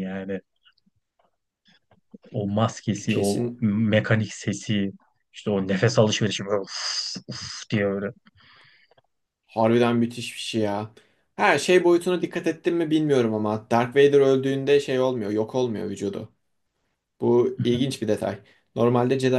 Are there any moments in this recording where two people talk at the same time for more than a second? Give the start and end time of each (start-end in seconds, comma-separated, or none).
none